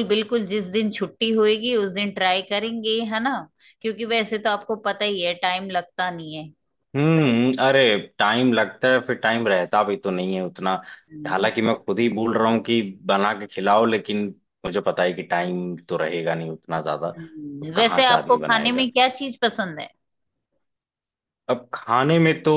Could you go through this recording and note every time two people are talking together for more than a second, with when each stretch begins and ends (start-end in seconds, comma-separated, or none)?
17.6-18.9